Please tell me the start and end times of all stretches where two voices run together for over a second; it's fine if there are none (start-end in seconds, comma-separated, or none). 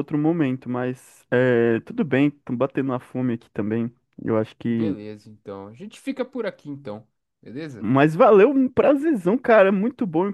none